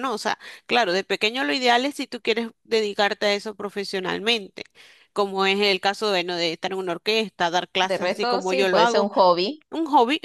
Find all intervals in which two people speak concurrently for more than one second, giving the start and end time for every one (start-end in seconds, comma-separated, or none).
7.8-9.1